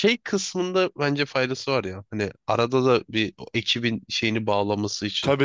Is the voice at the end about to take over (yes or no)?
yes